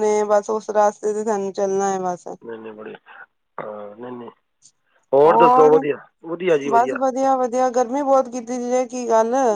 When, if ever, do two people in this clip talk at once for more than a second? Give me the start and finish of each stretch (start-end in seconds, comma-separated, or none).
none